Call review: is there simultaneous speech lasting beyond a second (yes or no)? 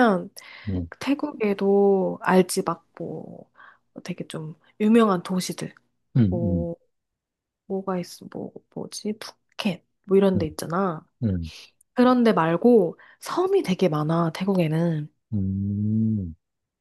no